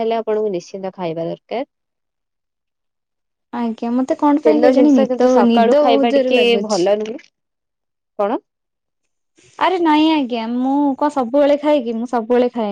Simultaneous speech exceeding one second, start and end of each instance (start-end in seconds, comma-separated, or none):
4.5-6.8